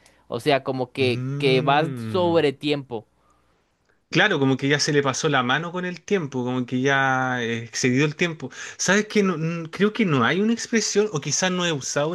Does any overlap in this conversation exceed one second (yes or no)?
yes